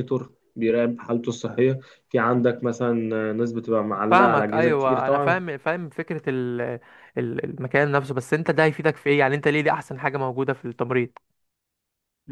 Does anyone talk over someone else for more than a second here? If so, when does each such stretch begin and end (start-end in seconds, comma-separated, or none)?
4.1-5.4